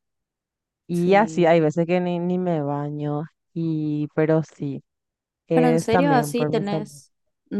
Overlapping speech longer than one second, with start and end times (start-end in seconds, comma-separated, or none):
5.5-7.0